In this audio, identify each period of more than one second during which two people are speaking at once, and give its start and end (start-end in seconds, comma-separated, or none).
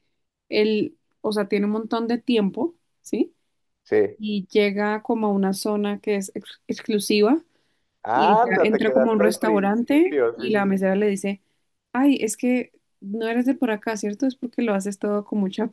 8.1-10.9